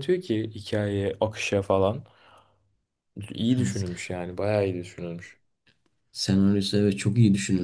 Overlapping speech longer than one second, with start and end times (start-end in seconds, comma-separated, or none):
none